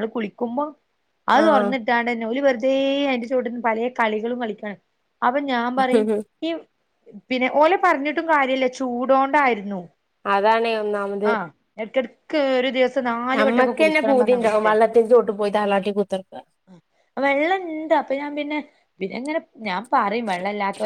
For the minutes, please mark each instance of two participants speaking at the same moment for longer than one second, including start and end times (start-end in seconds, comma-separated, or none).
13.4-14.8